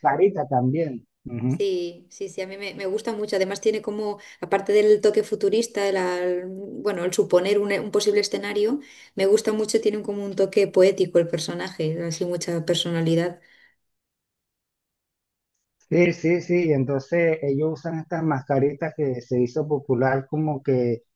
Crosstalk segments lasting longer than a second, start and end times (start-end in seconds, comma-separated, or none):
none